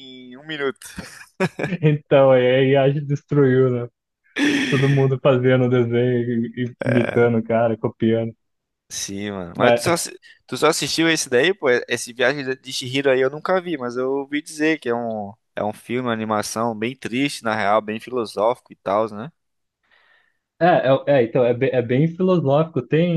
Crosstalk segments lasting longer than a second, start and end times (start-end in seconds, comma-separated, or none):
none